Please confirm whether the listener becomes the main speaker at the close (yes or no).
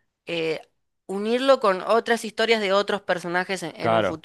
yes